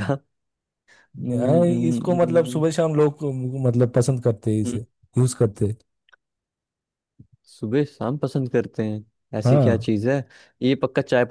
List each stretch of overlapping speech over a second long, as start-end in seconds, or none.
1.3-2.6